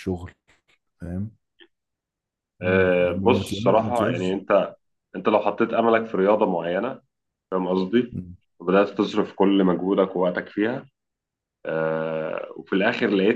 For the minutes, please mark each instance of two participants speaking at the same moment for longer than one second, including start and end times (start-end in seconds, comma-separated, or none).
2.6-4.3